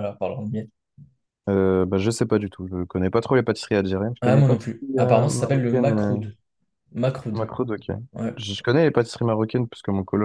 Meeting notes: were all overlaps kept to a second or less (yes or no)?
no